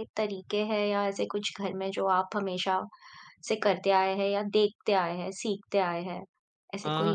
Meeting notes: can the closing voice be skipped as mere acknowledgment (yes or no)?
no